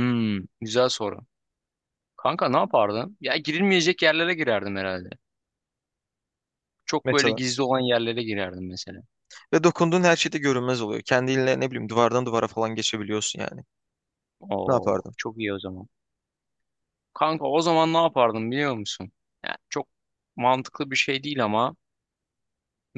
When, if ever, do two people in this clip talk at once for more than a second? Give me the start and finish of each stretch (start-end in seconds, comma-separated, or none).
none